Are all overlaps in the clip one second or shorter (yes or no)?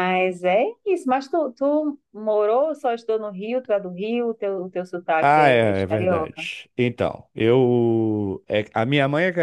no